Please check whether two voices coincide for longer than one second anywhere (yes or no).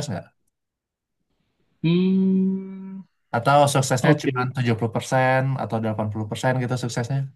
no